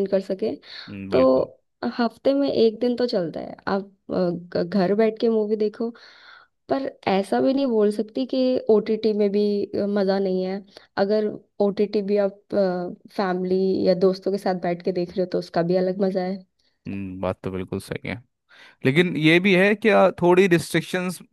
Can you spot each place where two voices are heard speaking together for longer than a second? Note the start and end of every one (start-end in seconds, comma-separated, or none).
none